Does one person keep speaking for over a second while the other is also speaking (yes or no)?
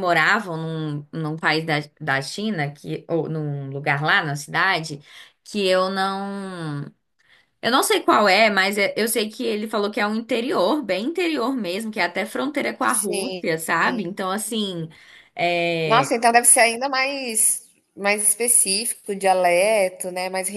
no